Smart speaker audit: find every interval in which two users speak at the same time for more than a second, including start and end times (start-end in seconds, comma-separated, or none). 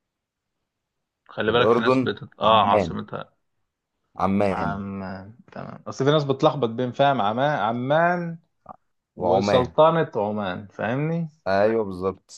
1.5-3.0